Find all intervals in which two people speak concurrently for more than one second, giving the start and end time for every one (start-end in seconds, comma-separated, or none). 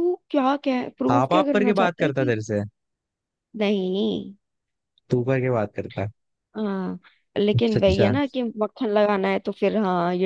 1.1-2.3